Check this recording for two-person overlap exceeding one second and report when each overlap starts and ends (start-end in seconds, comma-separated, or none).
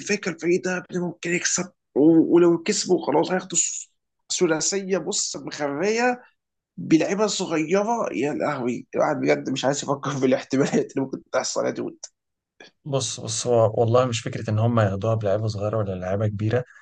none